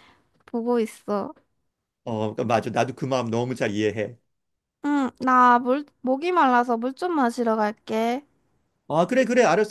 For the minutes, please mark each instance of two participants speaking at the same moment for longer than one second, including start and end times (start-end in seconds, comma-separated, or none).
none